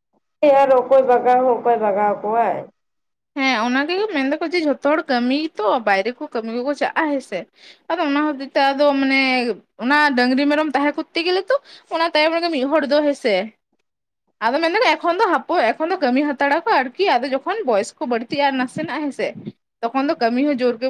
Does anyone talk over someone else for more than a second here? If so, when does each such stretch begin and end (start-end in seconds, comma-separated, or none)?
none